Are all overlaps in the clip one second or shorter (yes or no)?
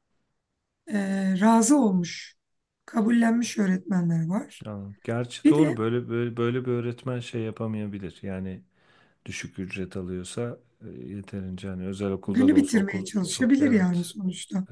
no